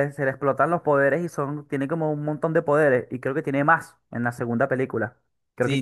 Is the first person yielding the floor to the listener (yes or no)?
yes